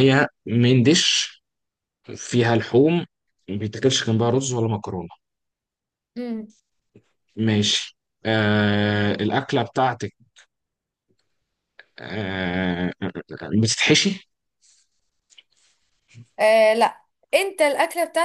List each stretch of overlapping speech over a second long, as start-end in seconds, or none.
none